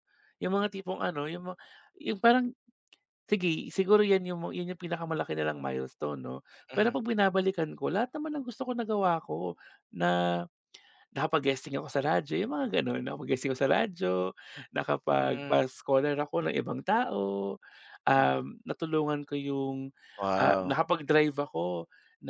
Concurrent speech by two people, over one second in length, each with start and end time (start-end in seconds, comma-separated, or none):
none